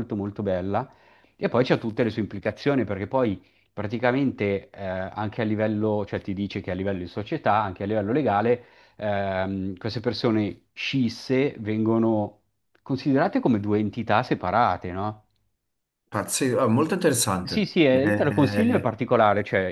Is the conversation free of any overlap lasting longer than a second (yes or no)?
no